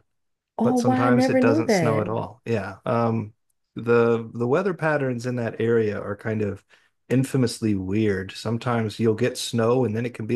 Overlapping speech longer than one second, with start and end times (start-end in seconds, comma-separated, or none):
0.6-2.1